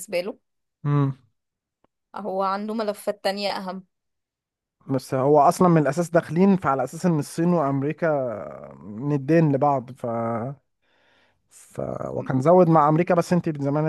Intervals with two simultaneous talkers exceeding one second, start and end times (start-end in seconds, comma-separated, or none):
none